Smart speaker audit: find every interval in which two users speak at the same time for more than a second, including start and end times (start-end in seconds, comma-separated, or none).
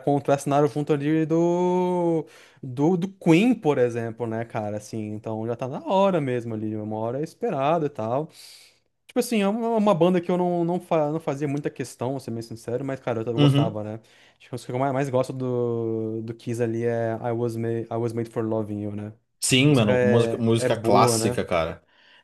19.6-21.4